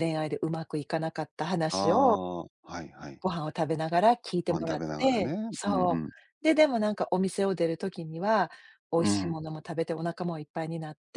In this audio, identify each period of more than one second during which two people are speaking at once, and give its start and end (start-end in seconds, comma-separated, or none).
4.5-6.1